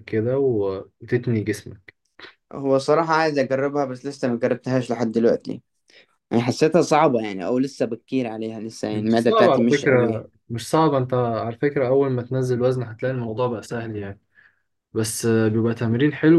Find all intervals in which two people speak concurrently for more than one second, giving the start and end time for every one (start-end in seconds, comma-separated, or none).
8.9-10.3